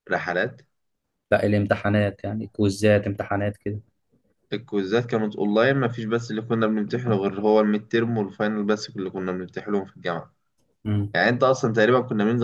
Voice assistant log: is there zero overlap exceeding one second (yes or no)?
yes